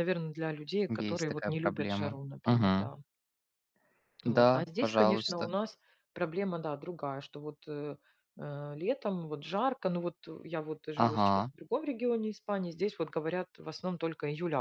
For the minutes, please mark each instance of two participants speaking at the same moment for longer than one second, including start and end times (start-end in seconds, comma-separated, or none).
0.9-2.9, 4.2-5.5